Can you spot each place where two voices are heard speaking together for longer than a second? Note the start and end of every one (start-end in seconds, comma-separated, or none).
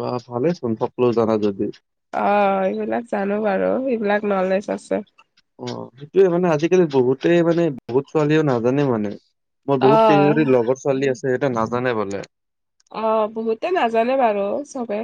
none